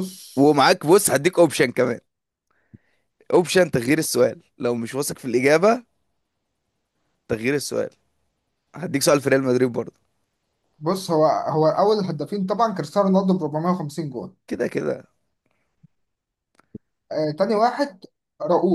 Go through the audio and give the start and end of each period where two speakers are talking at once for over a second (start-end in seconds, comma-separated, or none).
none